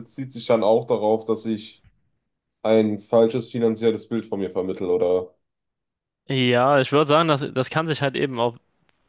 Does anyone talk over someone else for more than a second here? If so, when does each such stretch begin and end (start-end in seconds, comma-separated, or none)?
none